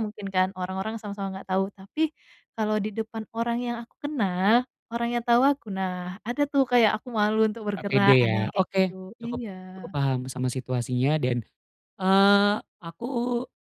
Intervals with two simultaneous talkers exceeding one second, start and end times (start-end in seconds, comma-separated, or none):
7.8-9.9